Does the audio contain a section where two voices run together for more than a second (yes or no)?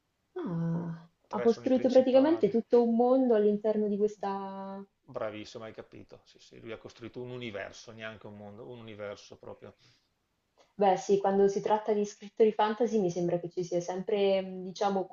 yes